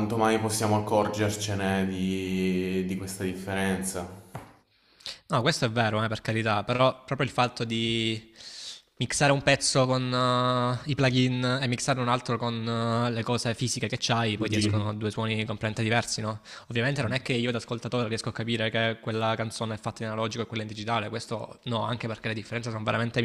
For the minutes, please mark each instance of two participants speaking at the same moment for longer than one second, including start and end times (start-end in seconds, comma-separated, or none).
none